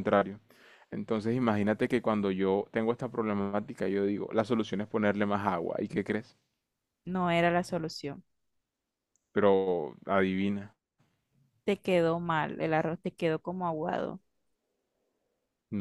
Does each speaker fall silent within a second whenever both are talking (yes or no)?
yes